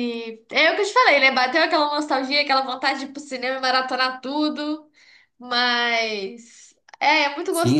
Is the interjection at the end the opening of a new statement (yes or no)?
yes